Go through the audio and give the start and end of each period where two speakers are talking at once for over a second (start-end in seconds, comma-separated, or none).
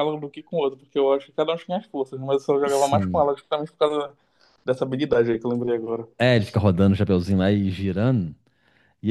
none